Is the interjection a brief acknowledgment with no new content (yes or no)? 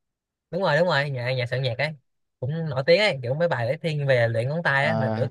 no